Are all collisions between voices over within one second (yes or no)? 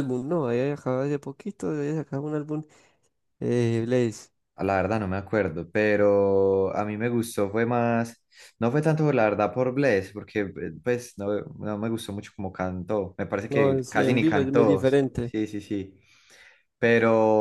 no